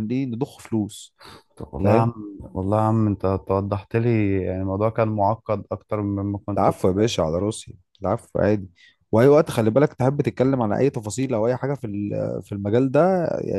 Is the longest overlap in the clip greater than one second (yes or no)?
no